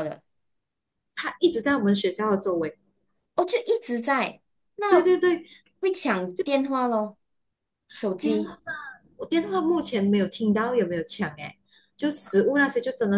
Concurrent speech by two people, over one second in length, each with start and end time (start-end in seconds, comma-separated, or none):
none